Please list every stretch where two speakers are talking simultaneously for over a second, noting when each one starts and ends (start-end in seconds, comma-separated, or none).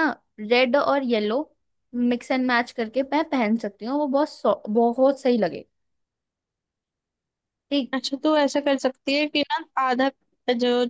none